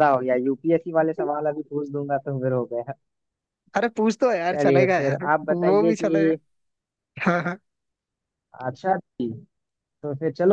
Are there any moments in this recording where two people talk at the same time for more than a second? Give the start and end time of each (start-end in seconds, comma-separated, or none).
4.5-6.3